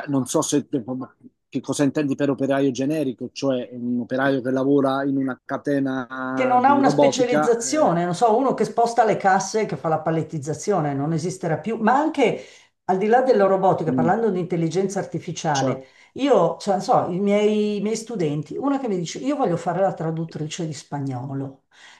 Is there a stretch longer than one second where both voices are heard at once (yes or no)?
yes